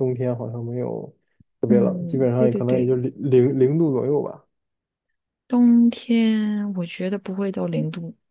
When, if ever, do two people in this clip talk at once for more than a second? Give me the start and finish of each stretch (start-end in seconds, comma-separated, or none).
1.7-2.9